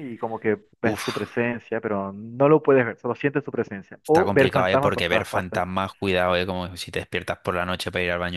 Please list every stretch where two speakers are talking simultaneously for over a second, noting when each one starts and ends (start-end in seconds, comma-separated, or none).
4.0-5.6